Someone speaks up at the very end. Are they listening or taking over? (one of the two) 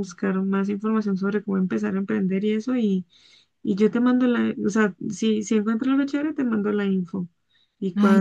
taking over